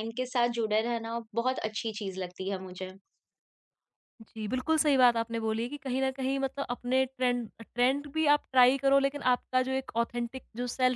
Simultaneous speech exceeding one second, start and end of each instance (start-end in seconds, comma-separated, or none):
none